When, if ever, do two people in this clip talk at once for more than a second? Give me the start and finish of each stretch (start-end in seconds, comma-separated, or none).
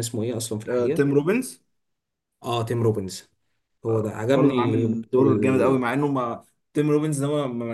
4.3-5.8